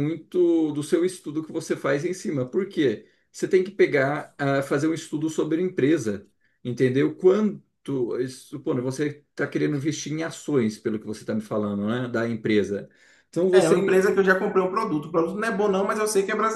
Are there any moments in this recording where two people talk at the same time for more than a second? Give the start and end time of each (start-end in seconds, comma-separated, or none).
none